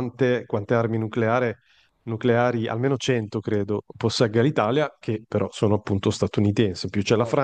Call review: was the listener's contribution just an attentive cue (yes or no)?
yes